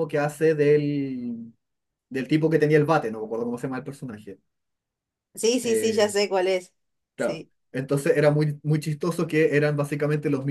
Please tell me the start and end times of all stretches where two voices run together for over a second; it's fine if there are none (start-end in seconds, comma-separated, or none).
none